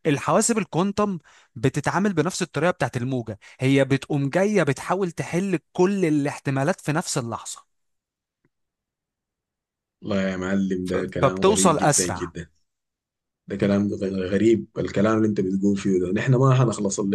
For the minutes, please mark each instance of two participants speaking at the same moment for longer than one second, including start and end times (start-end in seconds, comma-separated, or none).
10.9-12.3